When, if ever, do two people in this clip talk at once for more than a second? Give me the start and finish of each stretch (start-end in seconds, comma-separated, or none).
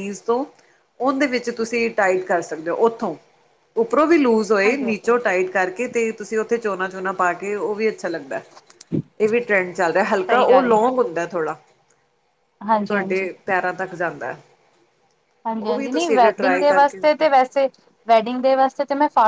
15.6-17.0